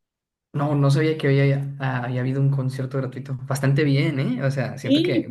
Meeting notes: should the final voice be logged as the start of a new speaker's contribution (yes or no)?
no